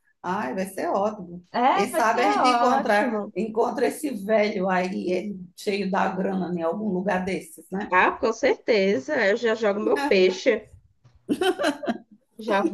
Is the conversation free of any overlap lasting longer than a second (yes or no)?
no